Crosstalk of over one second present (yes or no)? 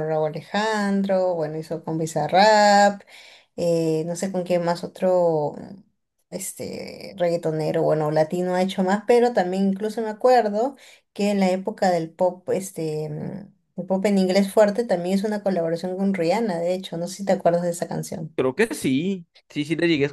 no